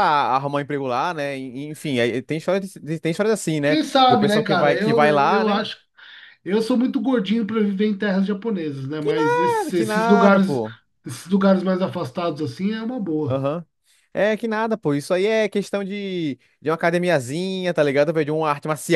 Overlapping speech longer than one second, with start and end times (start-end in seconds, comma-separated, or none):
3.6-5.6, 9.0-10.6